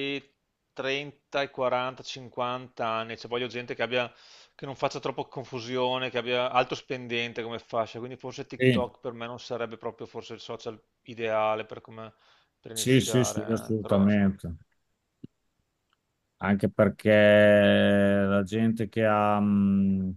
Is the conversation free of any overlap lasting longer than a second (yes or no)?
no